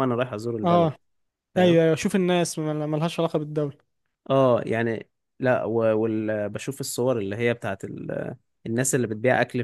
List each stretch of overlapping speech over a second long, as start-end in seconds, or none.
none